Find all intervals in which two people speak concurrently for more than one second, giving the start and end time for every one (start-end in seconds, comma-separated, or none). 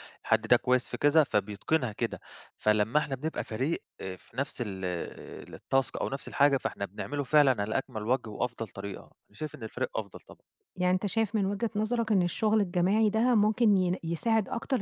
none